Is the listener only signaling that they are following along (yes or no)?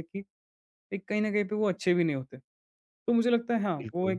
yes